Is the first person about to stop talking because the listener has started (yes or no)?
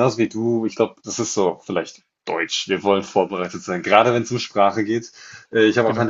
no